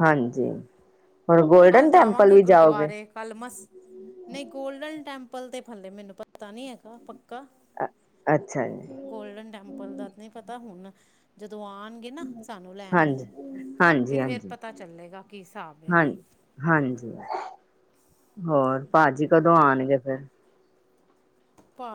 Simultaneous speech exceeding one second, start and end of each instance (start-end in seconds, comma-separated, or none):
1.7-2.9